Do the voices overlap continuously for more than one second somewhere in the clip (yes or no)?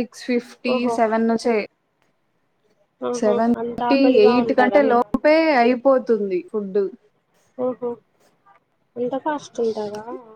yes